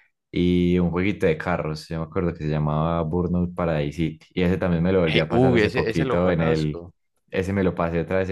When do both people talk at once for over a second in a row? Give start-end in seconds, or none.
5.0-6.8